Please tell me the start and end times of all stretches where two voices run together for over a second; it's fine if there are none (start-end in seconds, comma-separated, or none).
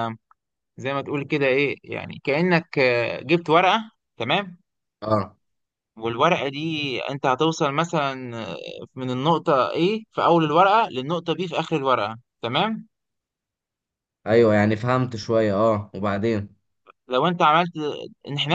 none